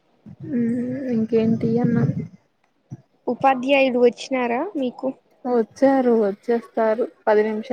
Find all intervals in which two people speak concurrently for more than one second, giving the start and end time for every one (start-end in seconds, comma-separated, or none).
none